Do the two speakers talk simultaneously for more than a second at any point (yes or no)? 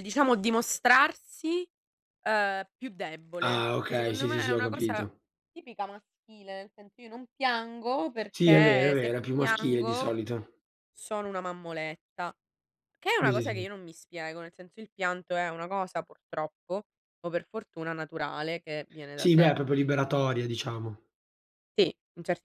yes